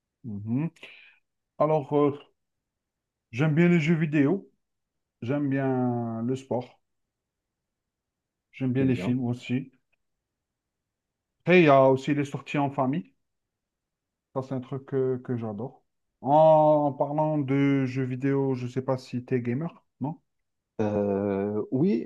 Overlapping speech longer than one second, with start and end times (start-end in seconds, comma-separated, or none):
none